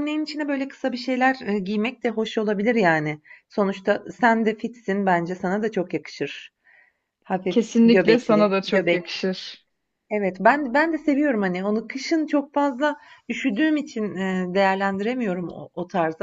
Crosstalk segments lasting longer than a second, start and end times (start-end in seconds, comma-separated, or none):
7.5-9.0